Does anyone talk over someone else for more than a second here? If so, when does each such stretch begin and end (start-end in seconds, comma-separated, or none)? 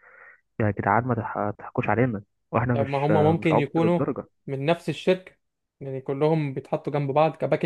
2.7-4.0